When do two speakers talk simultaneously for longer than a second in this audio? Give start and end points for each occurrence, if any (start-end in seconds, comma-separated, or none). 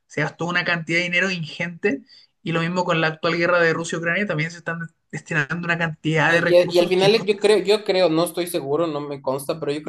6.3-7.7